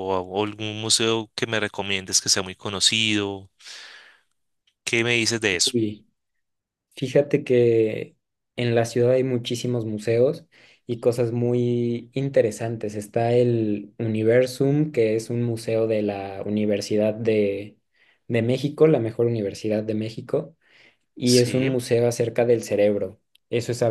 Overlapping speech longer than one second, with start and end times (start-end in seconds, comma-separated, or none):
none